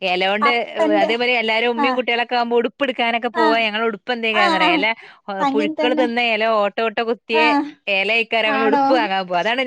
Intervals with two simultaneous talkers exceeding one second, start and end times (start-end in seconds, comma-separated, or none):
none